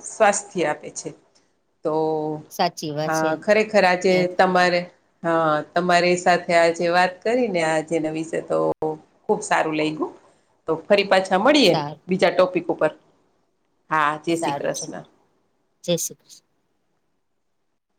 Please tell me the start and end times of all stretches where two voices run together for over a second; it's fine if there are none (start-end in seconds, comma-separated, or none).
none